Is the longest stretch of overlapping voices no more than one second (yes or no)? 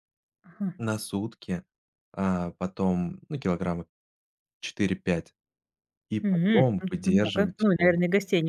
no